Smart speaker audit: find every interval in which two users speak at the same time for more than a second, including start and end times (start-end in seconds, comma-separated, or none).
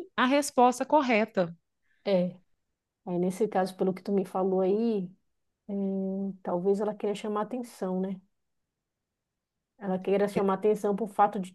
none